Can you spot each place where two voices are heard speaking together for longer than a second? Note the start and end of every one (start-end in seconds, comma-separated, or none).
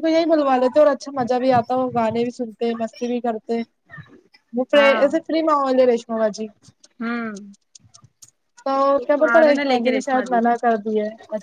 9.3-10.8